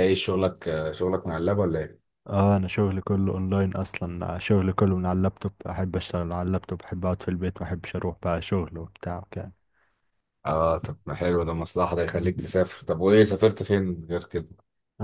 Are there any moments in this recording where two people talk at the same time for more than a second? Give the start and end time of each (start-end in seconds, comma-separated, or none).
none